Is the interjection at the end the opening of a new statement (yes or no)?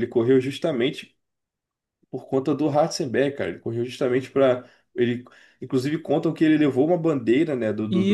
yes